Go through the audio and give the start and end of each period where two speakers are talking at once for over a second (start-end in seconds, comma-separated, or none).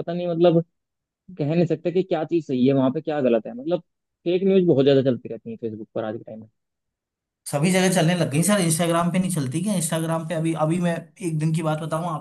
none